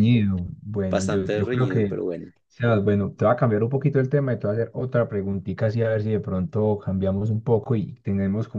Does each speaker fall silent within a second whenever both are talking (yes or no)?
no